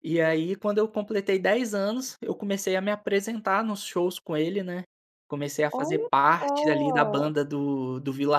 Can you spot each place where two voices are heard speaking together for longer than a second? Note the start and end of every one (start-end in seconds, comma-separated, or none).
5.7-7.3